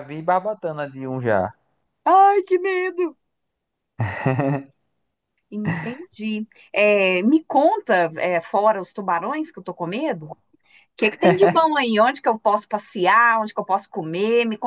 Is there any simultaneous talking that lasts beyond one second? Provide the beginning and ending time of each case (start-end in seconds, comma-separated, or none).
none